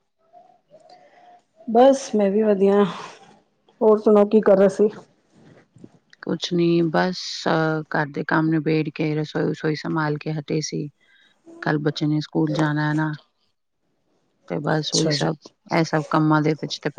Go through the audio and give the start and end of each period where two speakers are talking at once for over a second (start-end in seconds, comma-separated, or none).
none